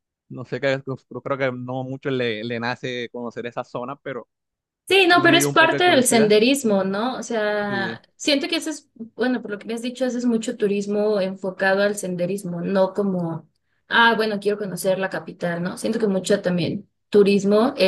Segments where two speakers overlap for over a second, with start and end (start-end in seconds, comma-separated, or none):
5.1-6.4